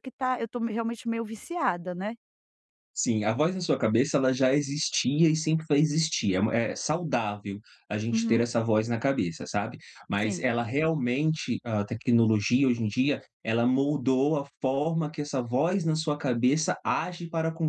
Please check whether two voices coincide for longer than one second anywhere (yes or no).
no